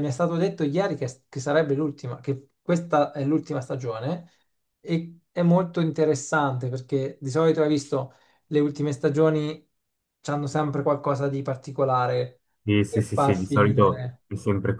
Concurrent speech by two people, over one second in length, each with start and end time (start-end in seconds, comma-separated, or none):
12.9-14.2